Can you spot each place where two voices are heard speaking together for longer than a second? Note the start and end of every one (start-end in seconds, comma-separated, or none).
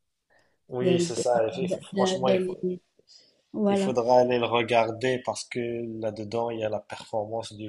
0.8-2.6